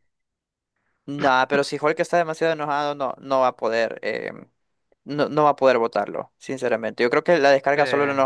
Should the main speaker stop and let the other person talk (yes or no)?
no